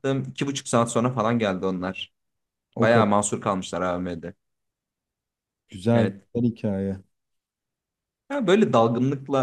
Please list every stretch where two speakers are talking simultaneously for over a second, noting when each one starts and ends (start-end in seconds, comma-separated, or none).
none